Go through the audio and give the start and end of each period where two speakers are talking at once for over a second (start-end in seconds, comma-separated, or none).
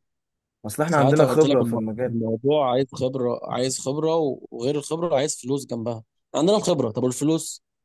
0.9-2.1